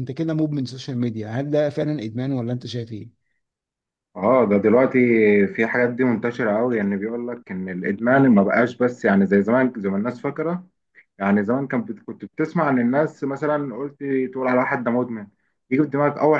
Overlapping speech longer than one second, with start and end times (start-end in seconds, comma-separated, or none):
none